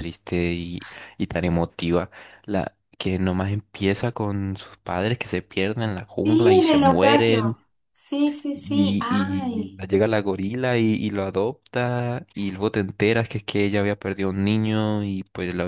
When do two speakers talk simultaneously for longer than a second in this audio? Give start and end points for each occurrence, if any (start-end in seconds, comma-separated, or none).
6.2-7.5, 8.5-9.8